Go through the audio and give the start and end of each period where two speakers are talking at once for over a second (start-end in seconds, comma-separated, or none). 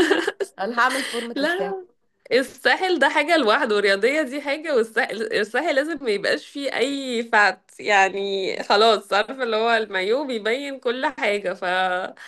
none